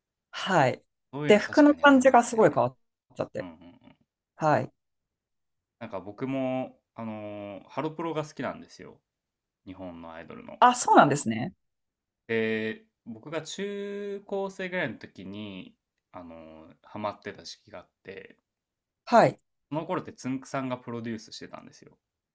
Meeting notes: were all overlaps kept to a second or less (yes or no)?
no